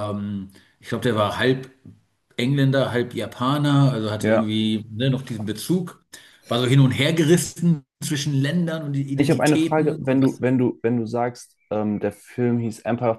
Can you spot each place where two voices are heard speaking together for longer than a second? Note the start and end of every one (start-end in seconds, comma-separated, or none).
9.2-10.4